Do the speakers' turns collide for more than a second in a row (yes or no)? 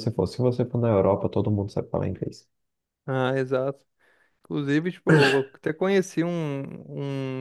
no